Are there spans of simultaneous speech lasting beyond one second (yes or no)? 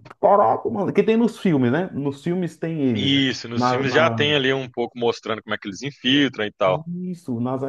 yes